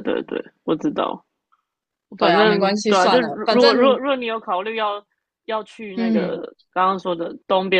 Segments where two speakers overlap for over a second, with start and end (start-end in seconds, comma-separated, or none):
2.2-4.0